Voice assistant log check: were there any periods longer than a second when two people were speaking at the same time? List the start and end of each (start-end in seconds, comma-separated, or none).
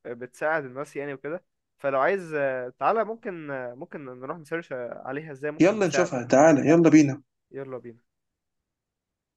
none